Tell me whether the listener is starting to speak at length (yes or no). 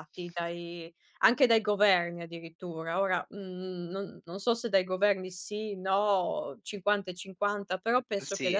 no